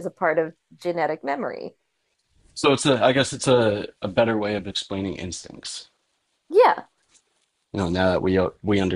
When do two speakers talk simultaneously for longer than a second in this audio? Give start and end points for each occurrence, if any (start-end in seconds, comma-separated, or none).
none